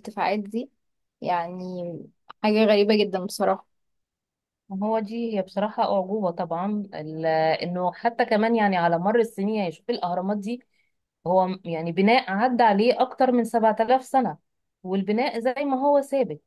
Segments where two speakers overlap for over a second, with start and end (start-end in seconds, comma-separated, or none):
none